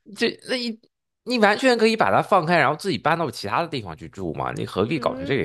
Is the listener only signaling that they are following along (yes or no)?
no